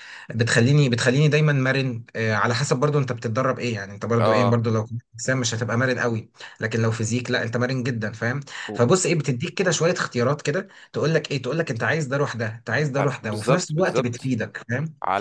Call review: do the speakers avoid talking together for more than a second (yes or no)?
no